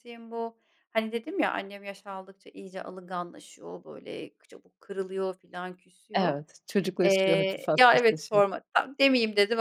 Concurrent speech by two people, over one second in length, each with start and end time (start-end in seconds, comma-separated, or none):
7.0-8.4